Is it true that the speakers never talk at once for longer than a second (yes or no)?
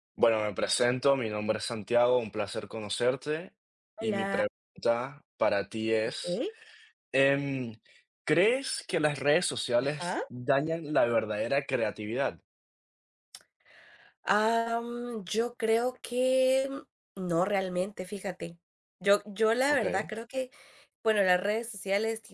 yes